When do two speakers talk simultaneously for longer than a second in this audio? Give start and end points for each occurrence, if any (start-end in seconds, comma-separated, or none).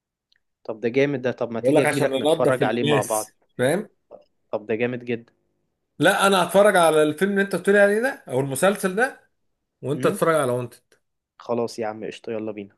1.5-3.3